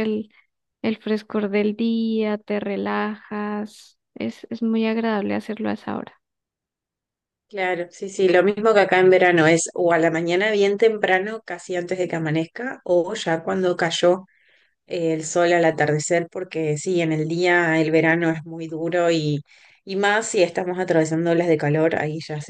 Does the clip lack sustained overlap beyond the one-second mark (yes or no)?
yes